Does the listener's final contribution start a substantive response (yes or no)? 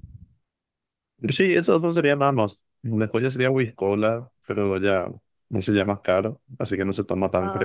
yes